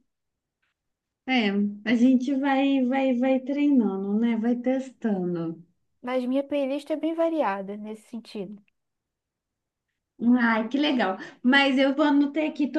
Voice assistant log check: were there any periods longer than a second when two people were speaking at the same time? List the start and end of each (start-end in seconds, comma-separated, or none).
none